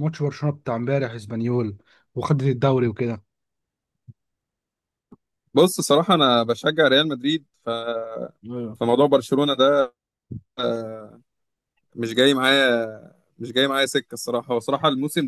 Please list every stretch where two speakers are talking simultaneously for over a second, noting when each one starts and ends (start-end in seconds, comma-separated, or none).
none